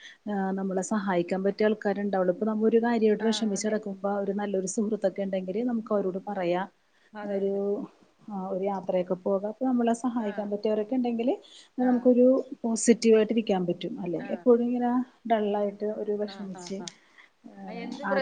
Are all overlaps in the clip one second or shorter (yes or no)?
yes